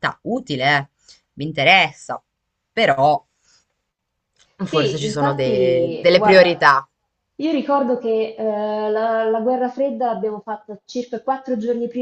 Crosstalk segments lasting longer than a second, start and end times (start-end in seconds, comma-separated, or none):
4.7-6.7